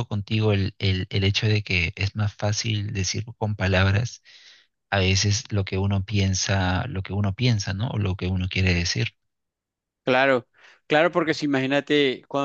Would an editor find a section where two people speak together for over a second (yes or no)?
no